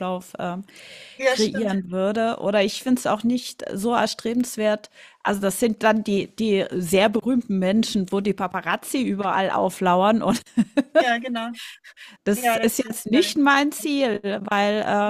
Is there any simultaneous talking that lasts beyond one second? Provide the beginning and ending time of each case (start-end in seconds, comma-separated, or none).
12.3-13.6